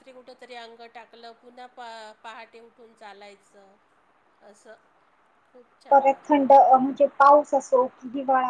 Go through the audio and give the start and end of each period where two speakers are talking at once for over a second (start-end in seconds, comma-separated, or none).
none